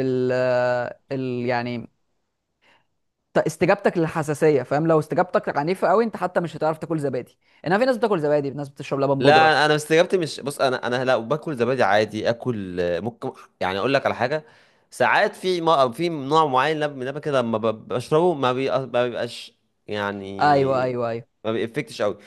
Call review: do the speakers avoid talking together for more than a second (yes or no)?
yes